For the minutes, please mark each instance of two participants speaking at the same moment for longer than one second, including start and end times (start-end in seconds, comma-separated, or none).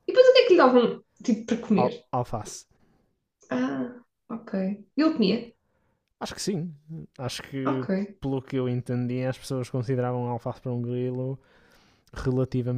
none